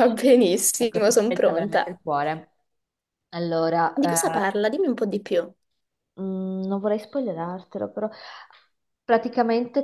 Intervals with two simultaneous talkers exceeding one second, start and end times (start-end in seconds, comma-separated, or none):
0.8-2.0